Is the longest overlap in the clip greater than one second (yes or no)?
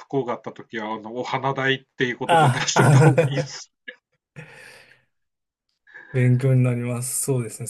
yes